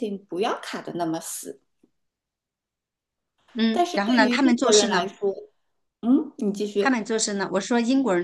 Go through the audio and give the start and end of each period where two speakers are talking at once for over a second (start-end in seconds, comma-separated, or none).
3.7-5.1